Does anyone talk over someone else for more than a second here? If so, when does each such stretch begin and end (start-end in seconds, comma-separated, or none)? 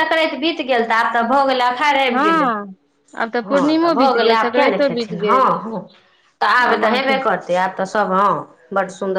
3.5-5.5